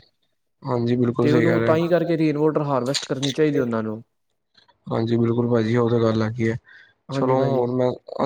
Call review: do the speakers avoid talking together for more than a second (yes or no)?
no